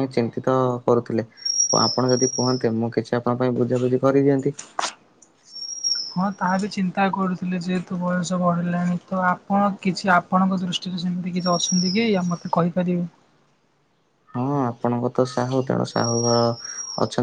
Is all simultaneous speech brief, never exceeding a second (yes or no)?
yes